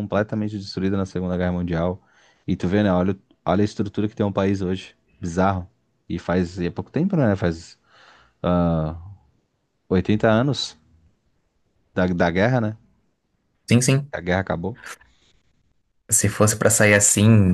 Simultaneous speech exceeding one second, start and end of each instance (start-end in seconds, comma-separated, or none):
none